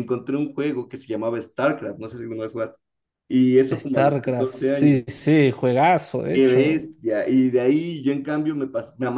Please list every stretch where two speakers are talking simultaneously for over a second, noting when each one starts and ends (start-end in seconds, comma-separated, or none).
3.7-5.0